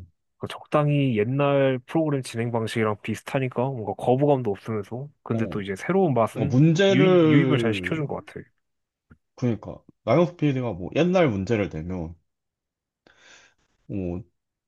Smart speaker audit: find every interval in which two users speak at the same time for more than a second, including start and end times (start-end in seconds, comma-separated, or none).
6.3-8.0